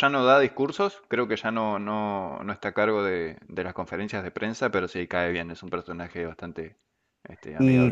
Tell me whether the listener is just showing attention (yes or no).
no